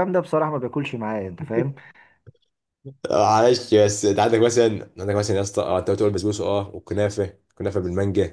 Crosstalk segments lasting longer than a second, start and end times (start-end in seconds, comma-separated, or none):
none